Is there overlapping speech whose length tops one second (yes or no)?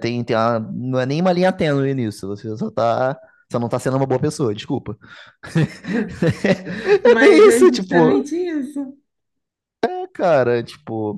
yes